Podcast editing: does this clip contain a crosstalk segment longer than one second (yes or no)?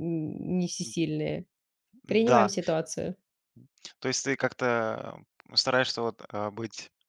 no